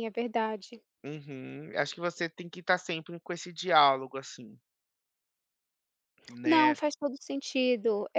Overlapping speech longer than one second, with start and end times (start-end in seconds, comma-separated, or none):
none